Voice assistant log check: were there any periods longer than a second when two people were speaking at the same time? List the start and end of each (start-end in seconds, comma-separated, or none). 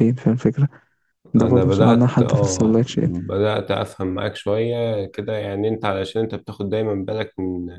1.4-3.1